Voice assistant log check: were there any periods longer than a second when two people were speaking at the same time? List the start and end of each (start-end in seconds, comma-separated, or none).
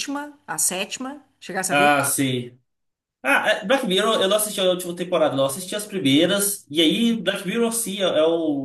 none